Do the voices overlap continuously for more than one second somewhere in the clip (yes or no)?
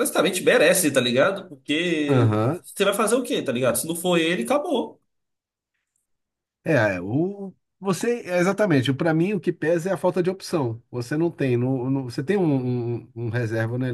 no